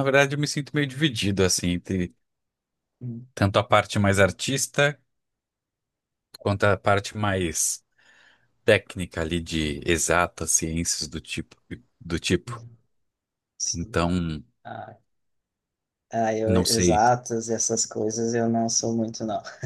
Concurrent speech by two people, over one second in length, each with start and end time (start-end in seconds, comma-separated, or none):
none